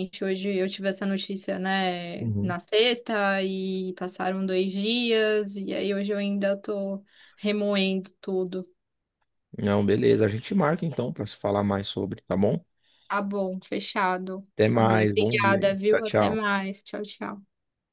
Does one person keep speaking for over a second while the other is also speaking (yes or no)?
yes